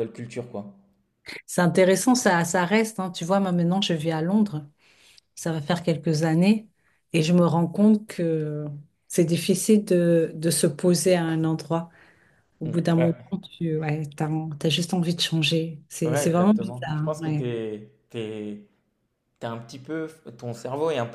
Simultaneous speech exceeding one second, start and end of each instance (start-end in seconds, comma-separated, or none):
16.1-17.5